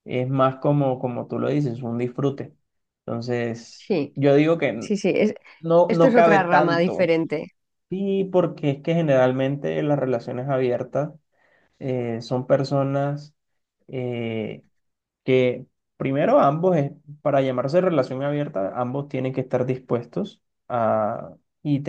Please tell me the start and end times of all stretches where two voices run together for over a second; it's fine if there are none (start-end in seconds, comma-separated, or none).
5.9-7.1